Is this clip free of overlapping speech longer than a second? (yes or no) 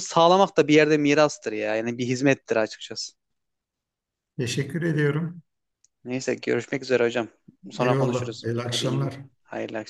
no